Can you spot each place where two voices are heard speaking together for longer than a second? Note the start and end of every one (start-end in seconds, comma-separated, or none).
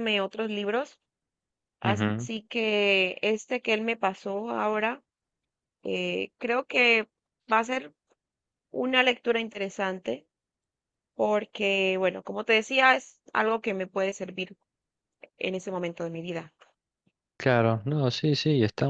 none